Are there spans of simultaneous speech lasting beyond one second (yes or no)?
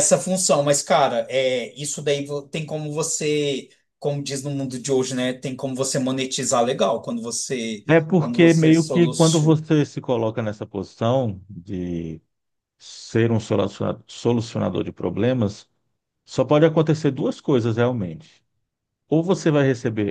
yes